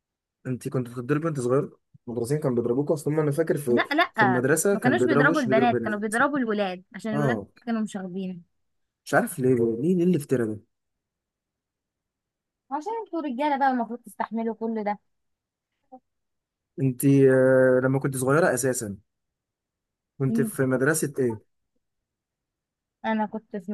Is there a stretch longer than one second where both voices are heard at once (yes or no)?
yes